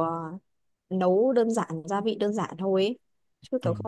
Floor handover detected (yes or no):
no